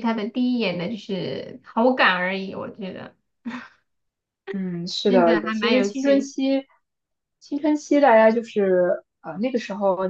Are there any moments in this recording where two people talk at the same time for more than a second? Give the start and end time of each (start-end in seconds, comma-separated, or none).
5.1-6.3